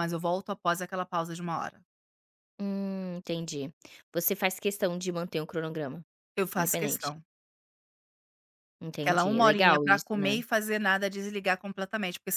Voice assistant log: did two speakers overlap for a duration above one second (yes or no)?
yes